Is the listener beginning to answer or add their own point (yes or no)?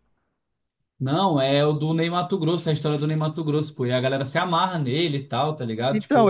yes